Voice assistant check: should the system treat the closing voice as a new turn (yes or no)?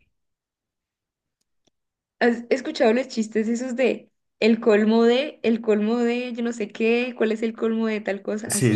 yes